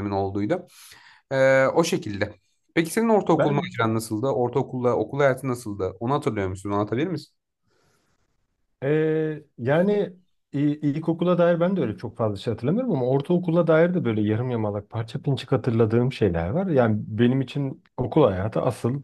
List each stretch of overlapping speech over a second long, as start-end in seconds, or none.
none